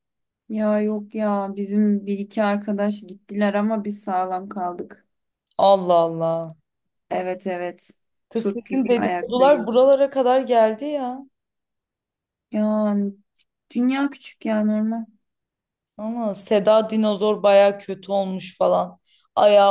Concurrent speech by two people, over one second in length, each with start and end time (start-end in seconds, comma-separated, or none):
8.3-9.7